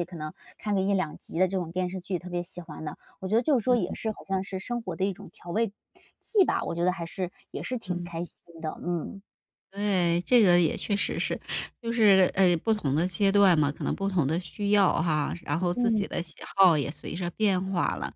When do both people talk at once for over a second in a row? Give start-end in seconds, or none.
none